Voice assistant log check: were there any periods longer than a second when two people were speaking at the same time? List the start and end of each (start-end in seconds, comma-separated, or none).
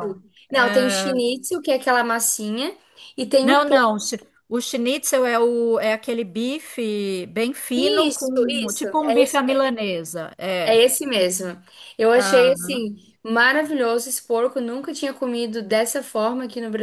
7.8-9.7